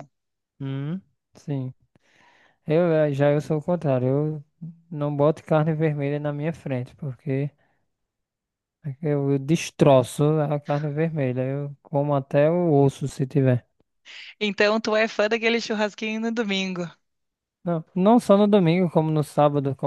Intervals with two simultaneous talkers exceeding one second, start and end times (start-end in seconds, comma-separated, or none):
none